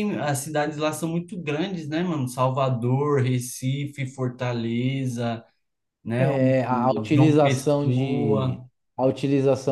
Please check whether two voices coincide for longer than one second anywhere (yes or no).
yes